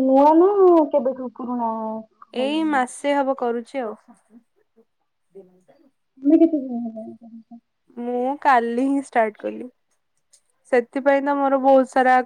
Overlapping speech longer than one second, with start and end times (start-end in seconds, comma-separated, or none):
none